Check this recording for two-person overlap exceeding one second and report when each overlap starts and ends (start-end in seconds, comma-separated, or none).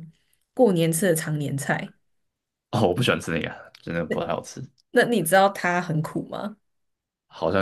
none